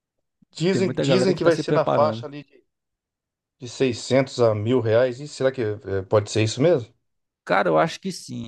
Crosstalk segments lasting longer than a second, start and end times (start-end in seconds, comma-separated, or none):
0.7-2.3